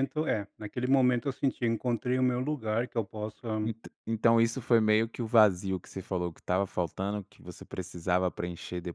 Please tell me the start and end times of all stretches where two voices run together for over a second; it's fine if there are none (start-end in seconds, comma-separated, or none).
none